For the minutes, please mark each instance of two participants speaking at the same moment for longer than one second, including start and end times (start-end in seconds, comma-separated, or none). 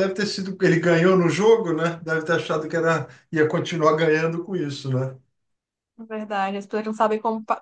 none